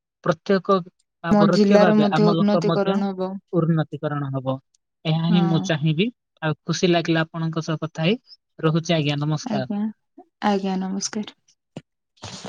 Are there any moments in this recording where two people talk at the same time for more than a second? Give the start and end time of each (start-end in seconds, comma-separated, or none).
1.3-3.0